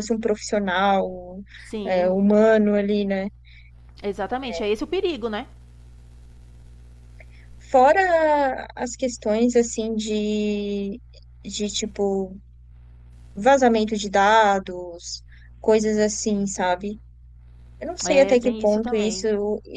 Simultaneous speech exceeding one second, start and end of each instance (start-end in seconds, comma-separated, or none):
18.0-19.3